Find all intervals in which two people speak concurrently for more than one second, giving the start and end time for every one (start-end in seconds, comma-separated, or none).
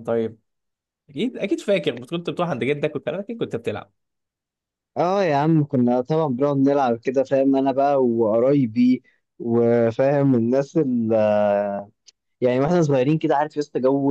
none